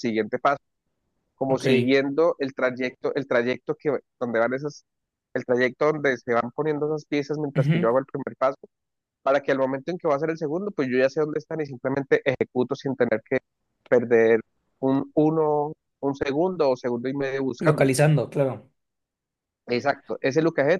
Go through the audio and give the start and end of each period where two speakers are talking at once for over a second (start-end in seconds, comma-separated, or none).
none